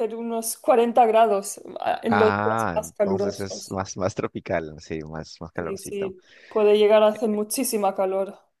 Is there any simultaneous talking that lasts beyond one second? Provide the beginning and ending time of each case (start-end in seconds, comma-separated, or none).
2.1-3.8